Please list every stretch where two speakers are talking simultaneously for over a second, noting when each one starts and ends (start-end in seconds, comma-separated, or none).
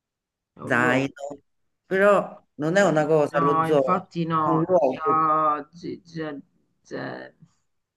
2.8-5.3